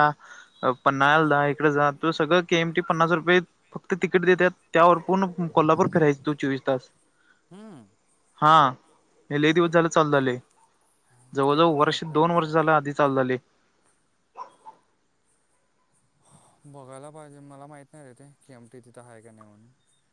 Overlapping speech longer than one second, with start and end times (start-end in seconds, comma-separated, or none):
11.5-12.8